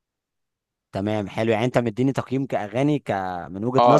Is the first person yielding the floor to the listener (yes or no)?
yes